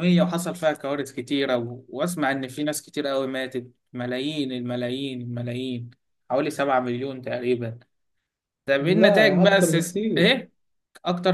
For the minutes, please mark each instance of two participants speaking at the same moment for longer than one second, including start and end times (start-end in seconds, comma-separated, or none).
8.8-10.3